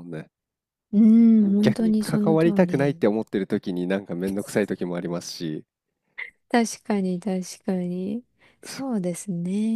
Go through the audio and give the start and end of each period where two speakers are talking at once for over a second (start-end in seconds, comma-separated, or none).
1.4-3.0